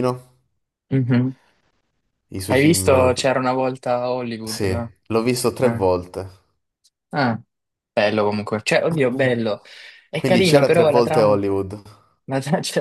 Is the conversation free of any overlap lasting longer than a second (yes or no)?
no